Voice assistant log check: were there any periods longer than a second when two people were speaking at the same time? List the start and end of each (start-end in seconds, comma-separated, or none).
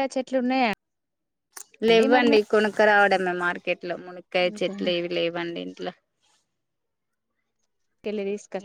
none